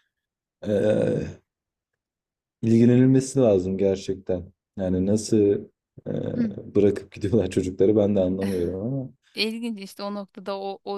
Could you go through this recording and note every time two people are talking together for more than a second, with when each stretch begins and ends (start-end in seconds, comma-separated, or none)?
none